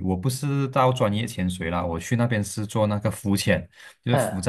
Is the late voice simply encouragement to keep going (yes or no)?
yes